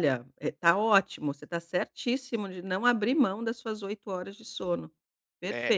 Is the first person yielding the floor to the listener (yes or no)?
yes